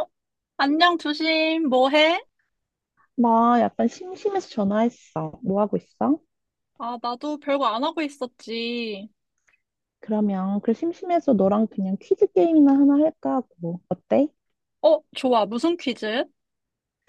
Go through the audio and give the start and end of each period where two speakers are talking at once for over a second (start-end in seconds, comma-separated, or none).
none